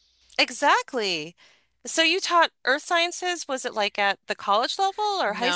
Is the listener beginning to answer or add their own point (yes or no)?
yes